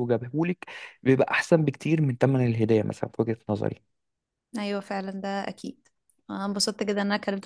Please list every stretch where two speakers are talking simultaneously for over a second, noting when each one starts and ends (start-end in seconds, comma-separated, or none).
none